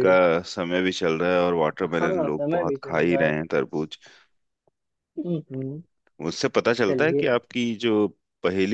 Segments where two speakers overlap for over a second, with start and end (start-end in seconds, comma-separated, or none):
1.9-3.3